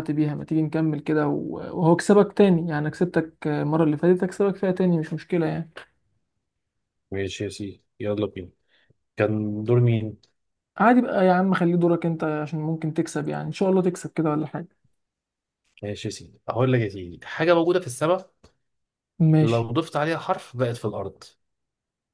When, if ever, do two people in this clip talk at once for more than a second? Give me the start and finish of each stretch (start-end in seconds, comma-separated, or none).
none